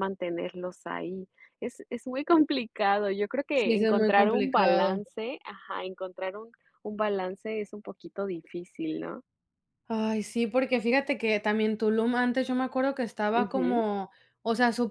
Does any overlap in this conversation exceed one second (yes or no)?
yes